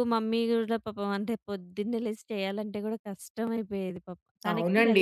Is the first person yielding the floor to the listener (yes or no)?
yes